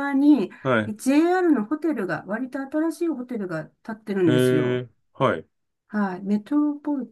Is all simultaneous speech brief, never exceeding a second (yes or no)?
yes